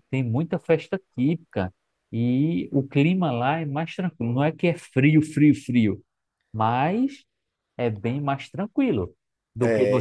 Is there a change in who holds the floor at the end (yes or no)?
yes